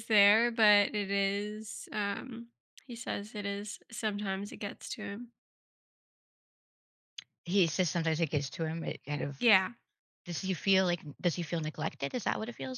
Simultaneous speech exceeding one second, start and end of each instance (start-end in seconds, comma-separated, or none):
none